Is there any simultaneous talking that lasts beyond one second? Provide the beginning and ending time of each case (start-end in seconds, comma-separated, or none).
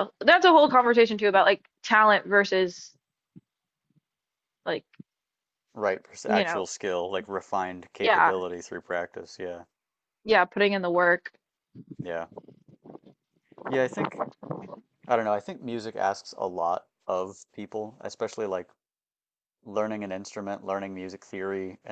none